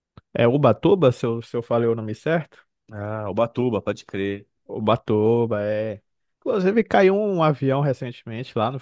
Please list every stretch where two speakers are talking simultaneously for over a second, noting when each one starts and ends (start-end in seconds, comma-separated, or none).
none